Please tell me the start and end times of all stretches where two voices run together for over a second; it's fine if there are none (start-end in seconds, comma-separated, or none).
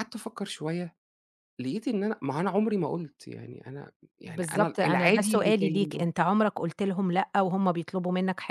4.2-6.0